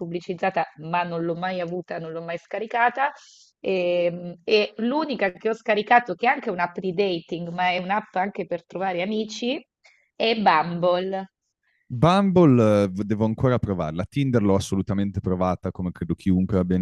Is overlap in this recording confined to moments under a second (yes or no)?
yes